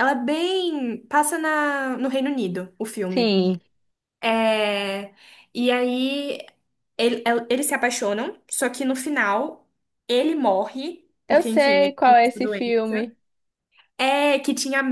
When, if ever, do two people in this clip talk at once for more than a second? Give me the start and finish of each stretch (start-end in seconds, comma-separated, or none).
11.3-13.1